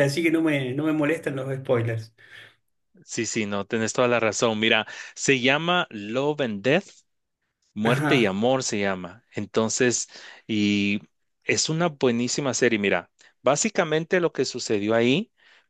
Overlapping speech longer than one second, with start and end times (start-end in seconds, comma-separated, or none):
none